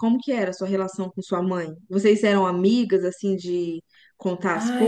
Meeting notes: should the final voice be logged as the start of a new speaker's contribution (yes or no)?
yes